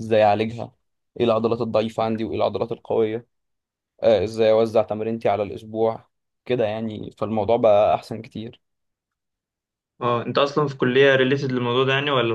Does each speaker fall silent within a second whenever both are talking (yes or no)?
yes